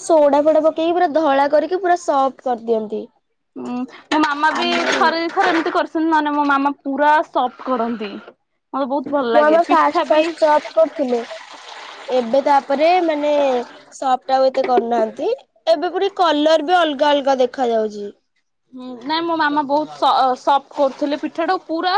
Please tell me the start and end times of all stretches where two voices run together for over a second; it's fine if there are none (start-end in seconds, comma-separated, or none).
none